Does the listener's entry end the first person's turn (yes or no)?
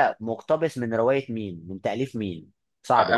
yes